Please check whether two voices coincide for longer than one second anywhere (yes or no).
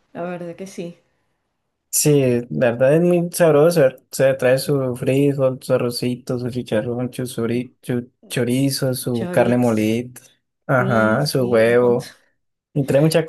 yes